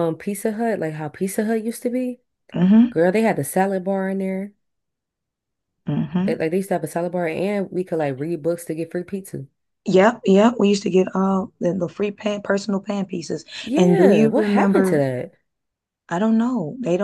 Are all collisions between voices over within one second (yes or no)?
no